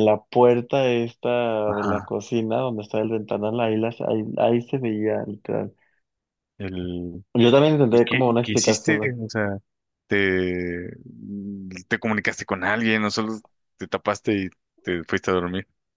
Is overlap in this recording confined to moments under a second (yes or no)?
no